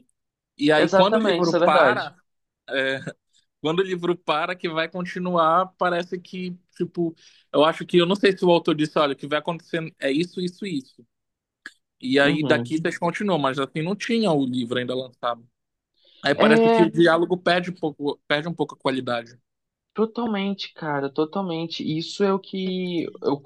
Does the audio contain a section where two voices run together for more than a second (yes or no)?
yes